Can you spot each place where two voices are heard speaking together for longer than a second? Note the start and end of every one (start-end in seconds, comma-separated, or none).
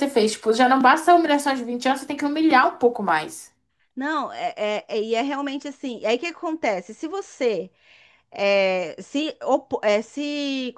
none